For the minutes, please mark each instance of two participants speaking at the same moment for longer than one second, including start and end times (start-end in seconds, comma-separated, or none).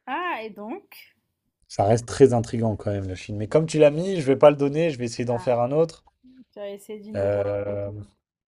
none